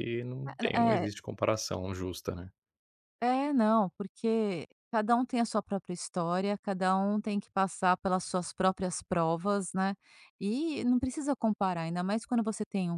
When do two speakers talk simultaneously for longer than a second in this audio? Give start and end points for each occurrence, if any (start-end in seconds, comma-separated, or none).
none